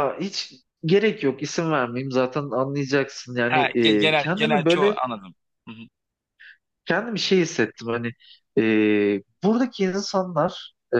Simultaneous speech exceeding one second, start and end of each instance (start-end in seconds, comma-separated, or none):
3.5-5.0